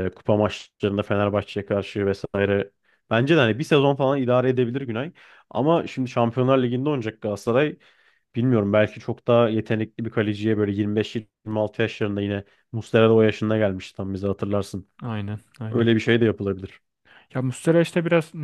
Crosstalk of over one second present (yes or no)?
no